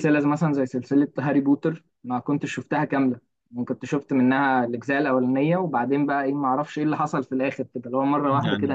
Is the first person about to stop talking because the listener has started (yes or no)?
no